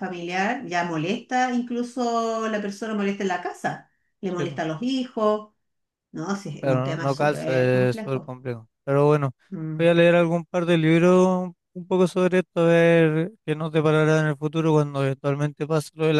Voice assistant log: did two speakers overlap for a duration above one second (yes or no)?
yes